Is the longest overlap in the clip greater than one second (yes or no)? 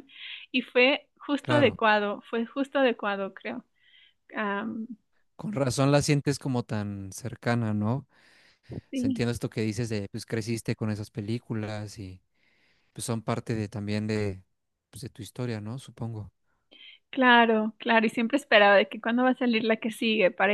no